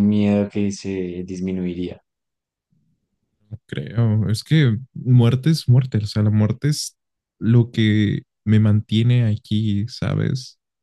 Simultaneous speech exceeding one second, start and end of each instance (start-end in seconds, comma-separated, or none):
none